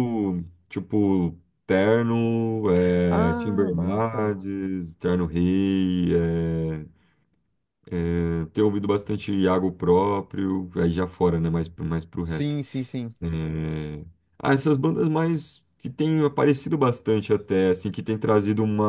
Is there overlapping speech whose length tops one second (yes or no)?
yes